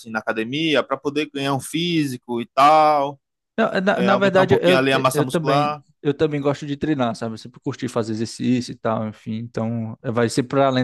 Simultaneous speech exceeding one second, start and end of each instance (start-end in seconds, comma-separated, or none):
3.9-5.8